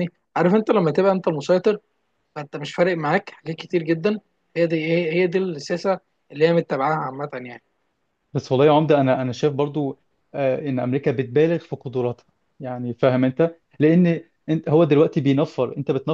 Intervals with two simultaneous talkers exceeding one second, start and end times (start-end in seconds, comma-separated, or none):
none